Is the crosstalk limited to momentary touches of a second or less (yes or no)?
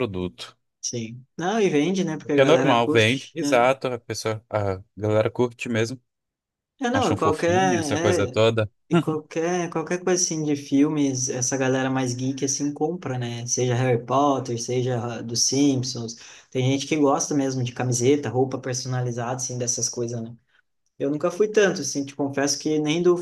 no